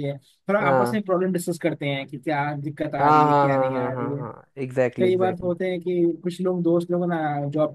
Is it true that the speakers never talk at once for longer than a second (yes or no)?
no